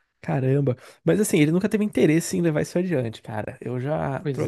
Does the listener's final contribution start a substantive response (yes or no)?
no